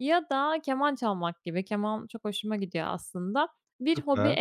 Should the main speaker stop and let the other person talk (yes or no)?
no